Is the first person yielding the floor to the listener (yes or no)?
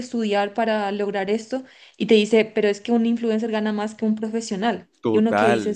yes